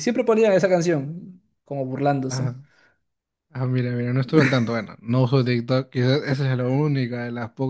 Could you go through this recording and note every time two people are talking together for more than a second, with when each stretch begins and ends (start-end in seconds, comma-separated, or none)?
none